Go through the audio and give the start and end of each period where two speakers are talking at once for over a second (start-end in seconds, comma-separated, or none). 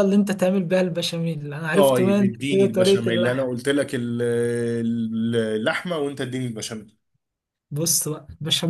1.7-3.5